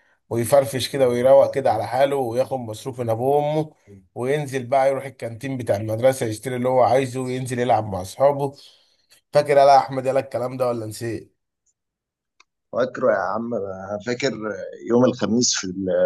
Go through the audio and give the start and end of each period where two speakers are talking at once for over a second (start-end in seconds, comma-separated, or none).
none